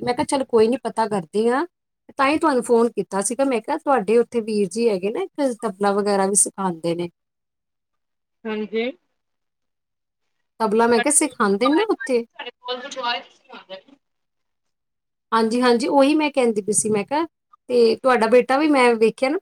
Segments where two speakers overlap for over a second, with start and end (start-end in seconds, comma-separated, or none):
10.9-12.2